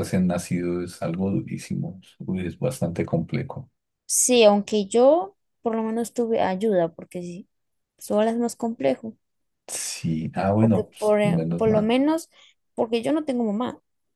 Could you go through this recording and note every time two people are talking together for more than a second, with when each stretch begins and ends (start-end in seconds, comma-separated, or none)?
10.6-11.9